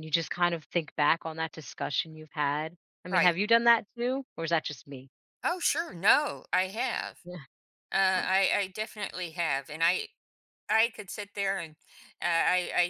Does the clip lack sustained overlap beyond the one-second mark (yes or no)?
yes